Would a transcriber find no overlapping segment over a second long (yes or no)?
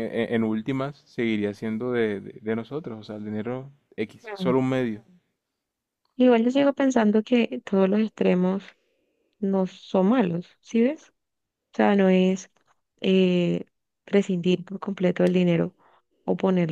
yes